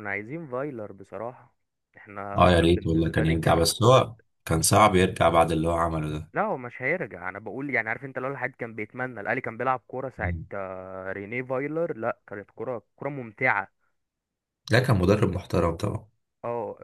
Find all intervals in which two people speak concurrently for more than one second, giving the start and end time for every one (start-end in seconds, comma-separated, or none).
2.4-3.7